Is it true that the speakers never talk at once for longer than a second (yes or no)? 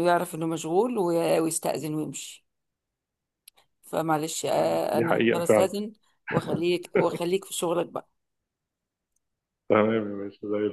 no